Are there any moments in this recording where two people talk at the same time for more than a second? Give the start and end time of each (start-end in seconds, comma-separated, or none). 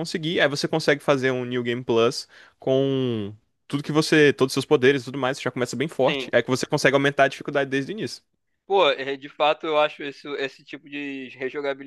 none